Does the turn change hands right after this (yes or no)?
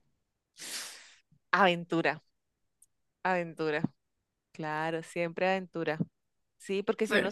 no